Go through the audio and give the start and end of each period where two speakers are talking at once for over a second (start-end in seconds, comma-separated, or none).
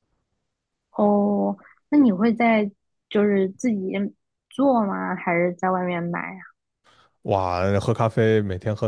none